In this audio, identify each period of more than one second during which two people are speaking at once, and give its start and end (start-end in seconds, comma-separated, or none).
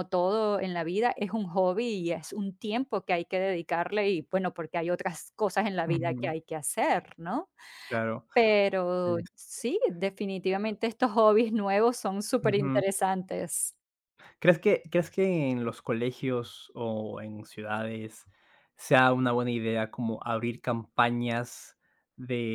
none